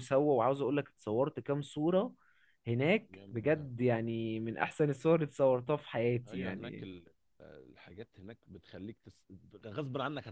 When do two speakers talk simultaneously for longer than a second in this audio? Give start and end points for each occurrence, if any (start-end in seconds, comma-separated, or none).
none